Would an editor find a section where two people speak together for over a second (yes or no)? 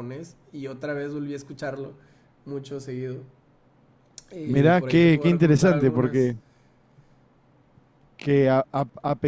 yes